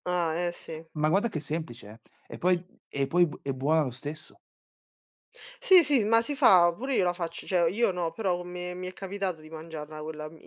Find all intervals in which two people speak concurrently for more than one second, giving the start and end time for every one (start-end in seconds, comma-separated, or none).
none